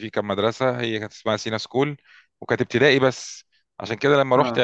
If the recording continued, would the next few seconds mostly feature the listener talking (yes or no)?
no